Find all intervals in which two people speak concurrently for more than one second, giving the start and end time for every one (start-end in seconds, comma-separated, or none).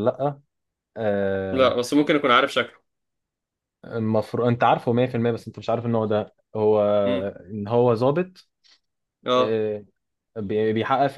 none